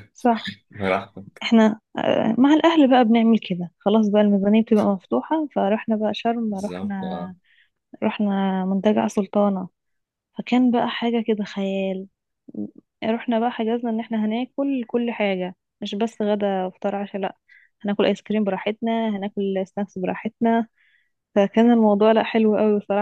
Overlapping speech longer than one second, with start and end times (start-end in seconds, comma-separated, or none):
none